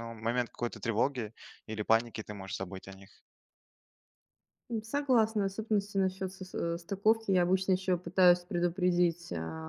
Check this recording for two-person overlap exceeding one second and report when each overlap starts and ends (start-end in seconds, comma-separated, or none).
none